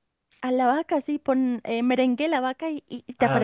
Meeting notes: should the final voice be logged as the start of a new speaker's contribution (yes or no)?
yes